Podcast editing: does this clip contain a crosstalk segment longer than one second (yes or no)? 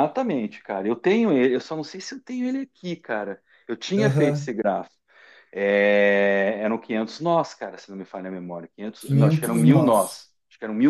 yes